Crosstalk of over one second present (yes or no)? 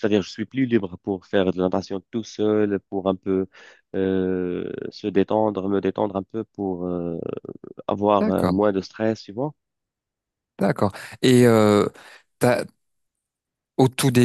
no